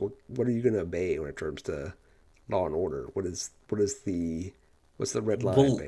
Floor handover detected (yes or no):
yes